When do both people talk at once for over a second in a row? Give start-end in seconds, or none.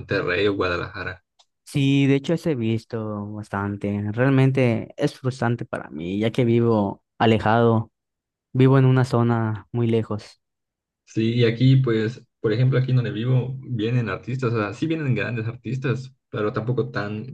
none